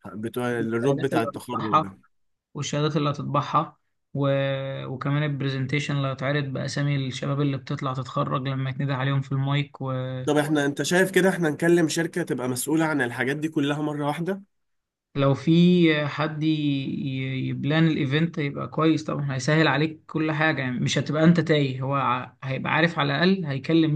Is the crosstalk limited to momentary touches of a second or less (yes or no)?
no